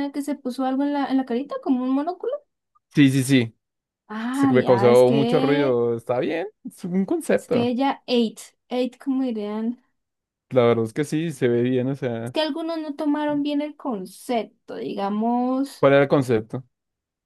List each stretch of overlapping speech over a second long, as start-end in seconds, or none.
4.3-5.8